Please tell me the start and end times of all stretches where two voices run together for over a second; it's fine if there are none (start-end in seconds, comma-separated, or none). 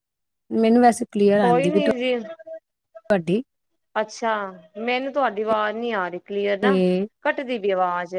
none